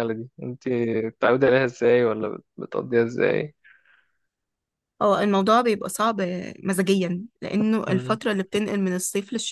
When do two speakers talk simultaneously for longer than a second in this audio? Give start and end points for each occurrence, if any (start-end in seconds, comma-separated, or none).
none